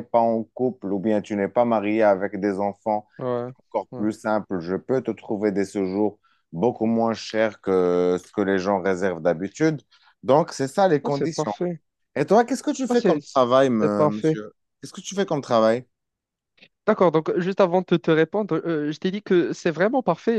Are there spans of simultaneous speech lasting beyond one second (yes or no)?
no